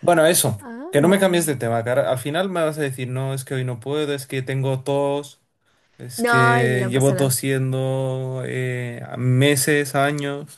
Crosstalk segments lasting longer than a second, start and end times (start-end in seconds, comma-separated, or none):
6.2-7.4